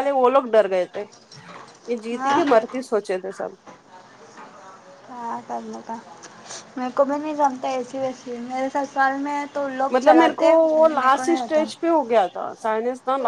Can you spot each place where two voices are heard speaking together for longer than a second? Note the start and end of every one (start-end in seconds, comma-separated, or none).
9.9-11.6